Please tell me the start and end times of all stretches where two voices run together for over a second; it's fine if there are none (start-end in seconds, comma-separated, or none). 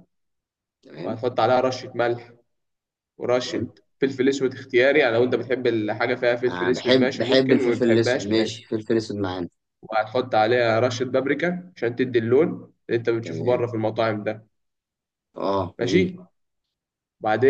6.5-8.7